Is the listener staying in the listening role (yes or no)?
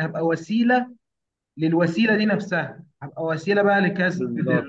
yes